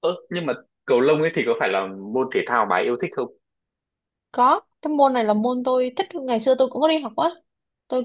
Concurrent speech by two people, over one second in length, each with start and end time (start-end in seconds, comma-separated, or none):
none